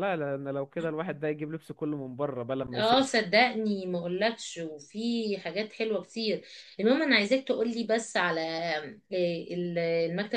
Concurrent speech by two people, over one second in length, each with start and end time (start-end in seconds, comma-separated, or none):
none